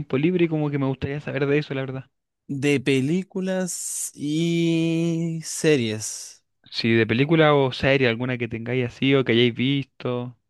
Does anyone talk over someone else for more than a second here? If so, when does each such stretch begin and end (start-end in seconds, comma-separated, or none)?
none